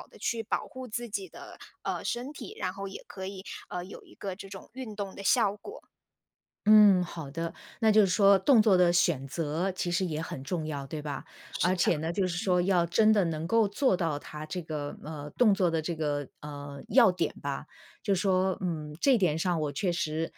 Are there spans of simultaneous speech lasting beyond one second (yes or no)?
no